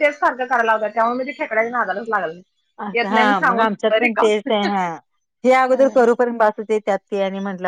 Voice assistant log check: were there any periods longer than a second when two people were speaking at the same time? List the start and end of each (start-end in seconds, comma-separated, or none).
2.9-4.3